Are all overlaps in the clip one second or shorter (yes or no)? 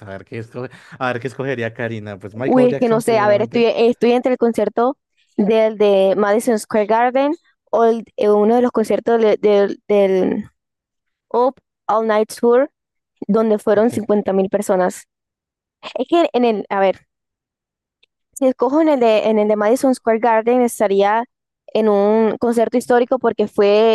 no